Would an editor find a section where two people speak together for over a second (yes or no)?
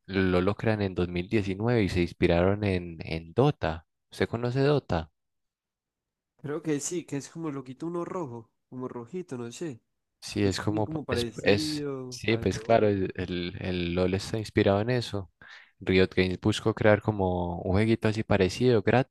yes